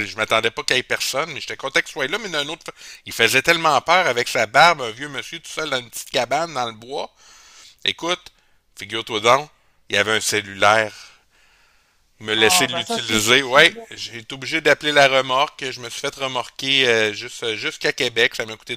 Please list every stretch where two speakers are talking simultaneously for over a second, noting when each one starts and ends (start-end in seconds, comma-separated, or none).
12.3-13.8